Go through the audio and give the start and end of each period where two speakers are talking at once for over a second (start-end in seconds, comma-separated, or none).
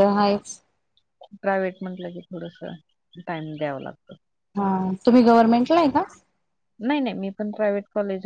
none